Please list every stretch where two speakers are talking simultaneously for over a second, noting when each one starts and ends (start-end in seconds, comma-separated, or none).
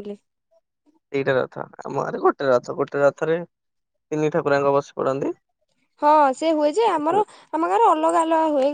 none